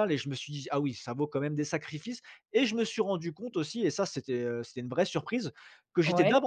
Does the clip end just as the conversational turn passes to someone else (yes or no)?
no